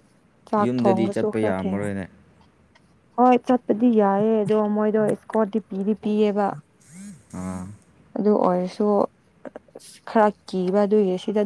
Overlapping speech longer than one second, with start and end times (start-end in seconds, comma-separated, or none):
0.6-1.8